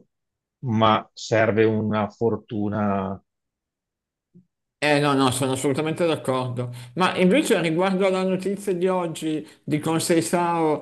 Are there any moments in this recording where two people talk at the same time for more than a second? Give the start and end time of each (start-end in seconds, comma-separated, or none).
none